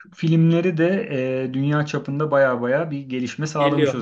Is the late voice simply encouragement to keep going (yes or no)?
no